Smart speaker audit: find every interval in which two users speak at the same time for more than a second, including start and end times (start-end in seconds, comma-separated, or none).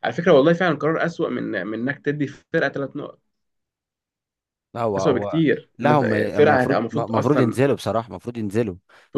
5.0-7.6